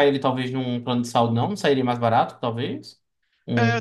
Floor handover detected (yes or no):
yes